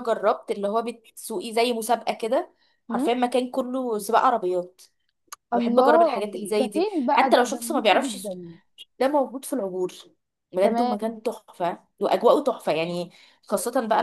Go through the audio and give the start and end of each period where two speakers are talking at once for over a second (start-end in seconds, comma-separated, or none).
5.5-8.4